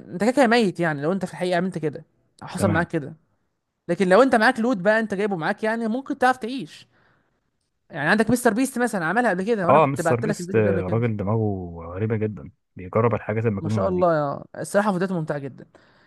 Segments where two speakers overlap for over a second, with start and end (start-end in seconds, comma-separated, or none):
9.7-11.0